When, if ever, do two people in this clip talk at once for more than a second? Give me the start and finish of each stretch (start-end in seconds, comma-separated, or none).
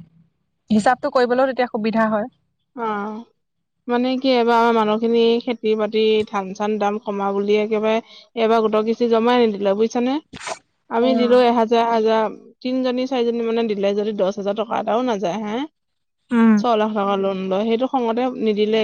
none